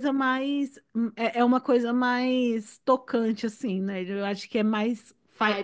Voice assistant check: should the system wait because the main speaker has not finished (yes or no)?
no